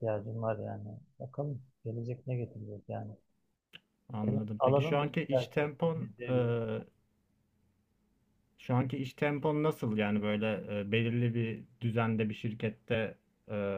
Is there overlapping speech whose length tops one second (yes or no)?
yes